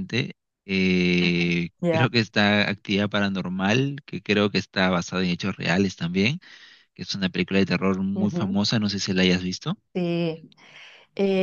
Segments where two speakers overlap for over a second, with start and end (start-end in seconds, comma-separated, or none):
none